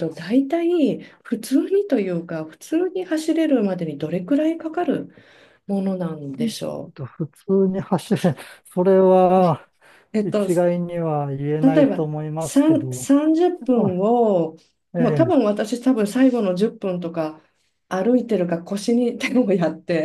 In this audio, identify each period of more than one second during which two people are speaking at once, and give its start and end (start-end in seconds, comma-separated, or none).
11.6-13.1